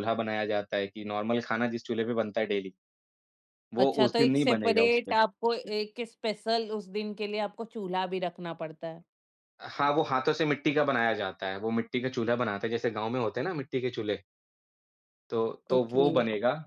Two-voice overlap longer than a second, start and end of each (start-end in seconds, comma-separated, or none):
3.8-5.2